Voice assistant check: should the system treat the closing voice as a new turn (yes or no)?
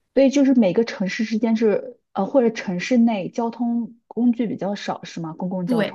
yes